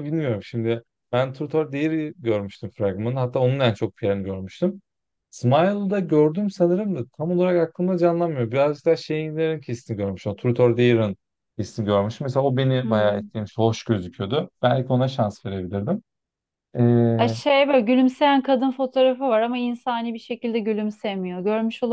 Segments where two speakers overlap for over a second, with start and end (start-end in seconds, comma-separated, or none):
none